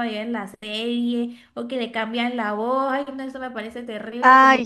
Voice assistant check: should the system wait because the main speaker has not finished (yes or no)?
no